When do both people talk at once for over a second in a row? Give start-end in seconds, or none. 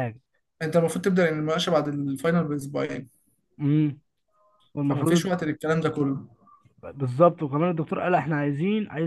none